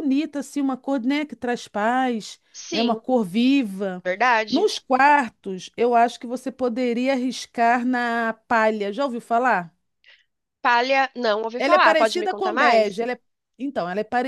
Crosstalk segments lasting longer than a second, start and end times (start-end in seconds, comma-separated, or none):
11.6-13.0